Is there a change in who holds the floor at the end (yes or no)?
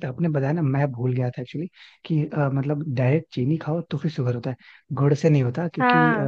no